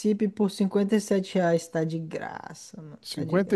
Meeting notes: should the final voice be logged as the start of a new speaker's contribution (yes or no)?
yes